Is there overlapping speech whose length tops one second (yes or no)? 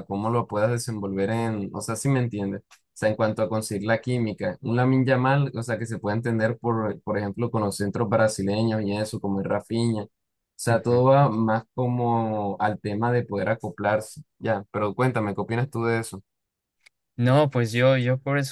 no